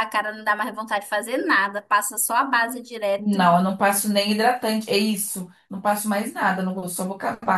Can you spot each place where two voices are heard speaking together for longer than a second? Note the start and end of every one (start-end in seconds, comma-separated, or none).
none